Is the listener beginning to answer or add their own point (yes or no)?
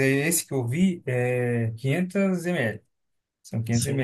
no